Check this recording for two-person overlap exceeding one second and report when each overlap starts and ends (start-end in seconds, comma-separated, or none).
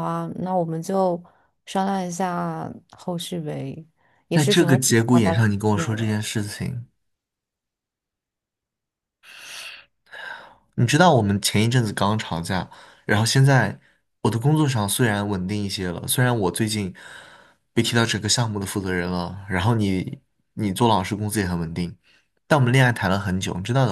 4.3-6.2